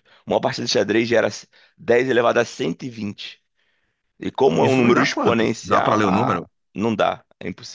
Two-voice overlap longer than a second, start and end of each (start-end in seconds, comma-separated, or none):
4.6-6.5